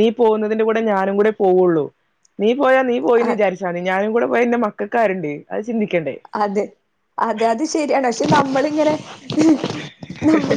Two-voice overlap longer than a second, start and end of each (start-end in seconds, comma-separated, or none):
none